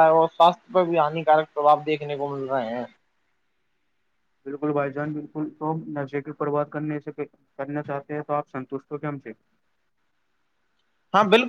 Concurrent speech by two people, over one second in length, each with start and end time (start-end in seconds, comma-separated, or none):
none